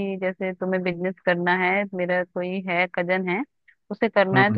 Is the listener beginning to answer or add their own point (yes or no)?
no